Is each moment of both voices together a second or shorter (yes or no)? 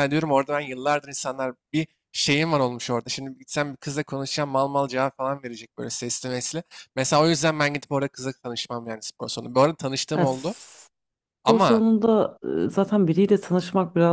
yes